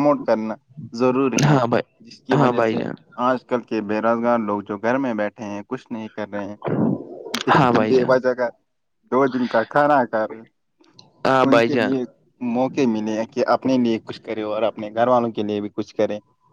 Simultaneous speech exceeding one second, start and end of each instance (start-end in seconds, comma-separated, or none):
none